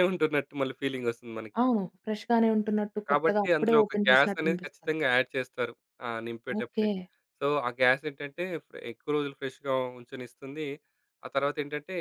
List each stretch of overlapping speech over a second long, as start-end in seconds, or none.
3.1-4.9